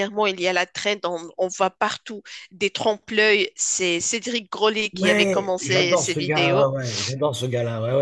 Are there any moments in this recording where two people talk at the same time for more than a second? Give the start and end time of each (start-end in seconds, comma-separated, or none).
4.9-6.7